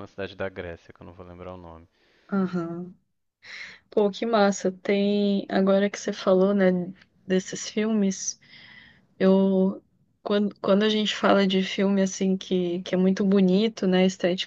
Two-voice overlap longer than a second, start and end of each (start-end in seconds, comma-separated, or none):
none